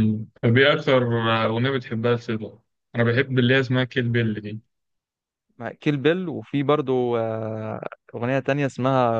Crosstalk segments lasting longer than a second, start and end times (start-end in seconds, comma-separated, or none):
none